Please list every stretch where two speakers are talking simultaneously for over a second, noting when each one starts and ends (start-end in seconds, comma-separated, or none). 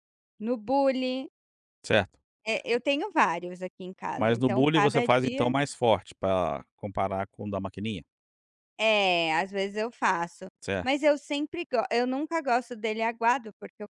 4.2-5.5